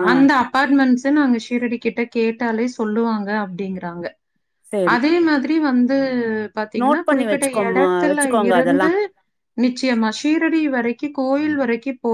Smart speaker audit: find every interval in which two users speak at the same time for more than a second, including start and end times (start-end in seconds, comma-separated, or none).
6.8-8.9